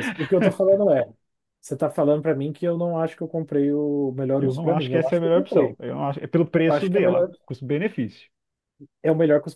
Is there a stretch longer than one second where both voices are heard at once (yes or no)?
yes